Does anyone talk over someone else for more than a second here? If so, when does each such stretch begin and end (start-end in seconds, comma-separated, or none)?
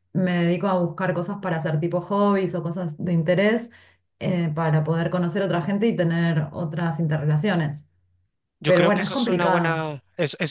8.7-9.9